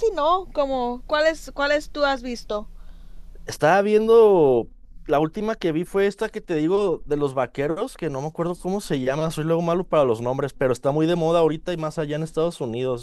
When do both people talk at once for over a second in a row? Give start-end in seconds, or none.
none